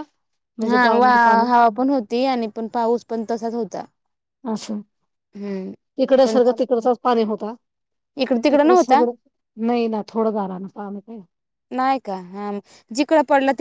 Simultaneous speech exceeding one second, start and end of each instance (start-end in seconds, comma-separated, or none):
none